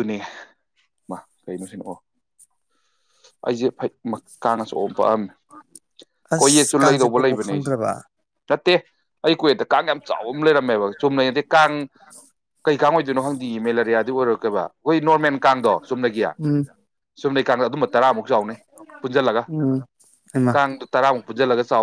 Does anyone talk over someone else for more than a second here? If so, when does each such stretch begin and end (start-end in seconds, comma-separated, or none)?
6.4-7.7